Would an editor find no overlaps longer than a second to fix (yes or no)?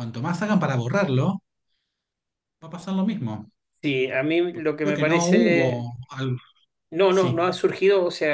no